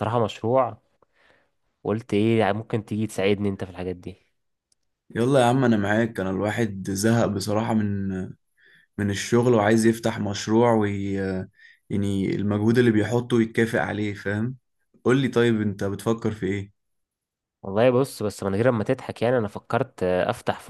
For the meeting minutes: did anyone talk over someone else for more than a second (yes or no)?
no